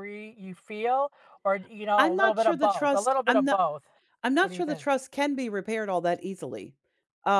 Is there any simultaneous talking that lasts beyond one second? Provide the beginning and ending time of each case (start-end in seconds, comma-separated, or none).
2.0-3.6